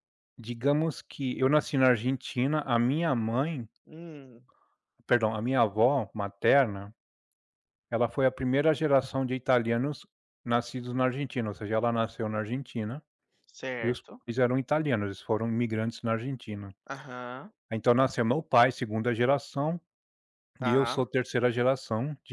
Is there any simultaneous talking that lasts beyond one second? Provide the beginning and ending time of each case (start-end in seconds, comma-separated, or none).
none